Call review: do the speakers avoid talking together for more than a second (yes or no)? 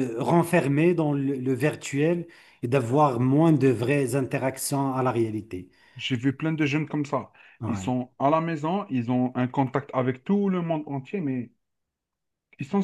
yes